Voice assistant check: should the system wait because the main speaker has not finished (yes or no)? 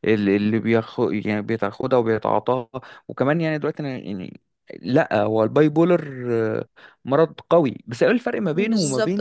no